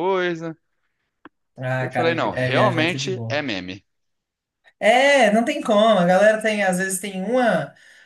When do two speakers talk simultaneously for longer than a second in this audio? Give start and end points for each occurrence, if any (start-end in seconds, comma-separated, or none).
1.8-3.4